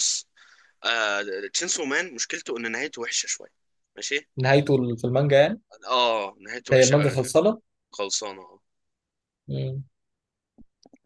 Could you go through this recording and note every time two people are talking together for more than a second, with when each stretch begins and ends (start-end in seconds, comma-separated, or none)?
none